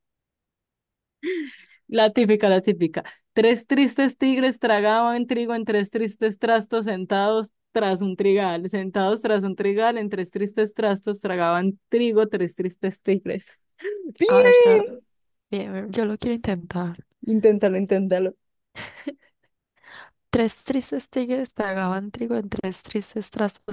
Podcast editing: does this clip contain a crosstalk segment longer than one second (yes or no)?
no